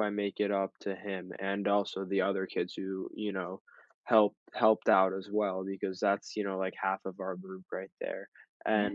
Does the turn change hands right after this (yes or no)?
no